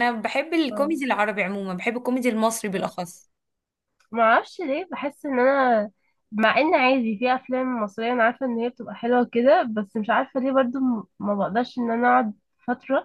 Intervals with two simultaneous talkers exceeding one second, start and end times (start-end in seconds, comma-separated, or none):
none